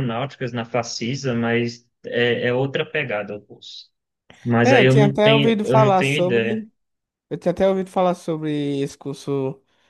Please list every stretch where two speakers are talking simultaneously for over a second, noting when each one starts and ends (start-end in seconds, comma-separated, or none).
4.6-6.5